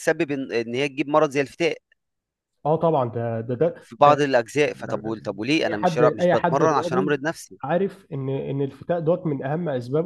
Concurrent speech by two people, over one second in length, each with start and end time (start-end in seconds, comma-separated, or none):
5.6-7.1